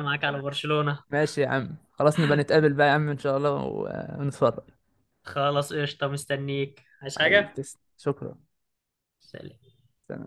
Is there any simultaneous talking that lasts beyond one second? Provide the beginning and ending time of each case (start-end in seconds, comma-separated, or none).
none